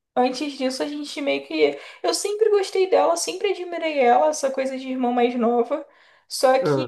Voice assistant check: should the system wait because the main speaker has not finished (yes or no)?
yes